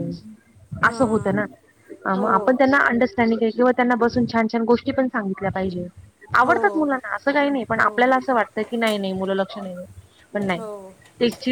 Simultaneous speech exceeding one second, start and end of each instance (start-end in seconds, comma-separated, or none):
none